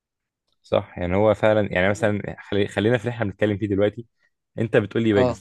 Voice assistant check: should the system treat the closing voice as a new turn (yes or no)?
no